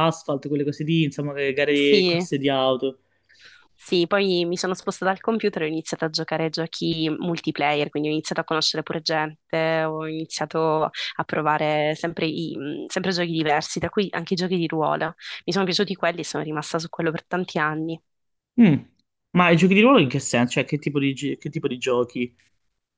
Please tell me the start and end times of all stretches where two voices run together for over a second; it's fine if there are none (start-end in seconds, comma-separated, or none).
none